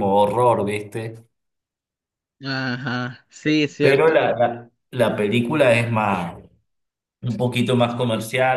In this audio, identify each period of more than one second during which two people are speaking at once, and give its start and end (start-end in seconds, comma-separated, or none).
none